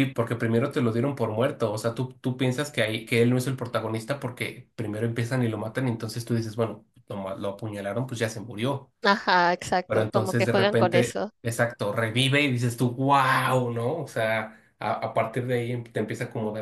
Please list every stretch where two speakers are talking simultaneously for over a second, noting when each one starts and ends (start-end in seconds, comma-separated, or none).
9.8-11.3